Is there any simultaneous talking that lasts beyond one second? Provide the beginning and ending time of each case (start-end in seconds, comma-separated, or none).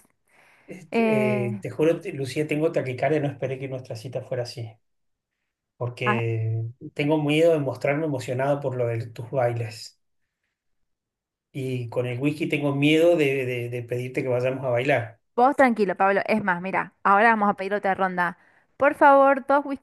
none